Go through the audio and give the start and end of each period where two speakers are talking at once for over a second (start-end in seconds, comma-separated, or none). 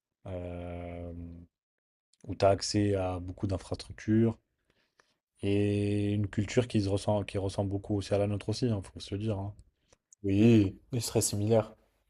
none